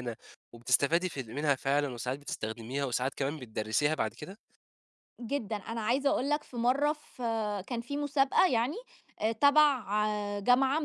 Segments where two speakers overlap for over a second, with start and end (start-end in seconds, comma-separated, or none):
none